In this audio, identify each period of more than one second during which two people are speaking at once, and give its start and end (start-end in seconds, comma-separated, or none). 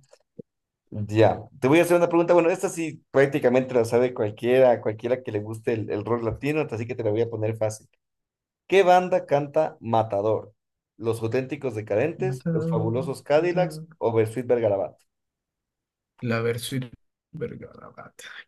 12.2-13.9